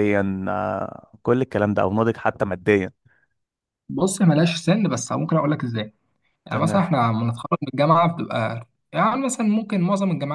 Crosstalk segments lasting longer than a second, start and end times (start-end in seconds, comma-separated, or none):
none